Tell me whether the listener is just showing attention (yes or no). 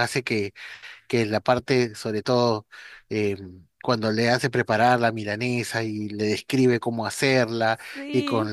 yes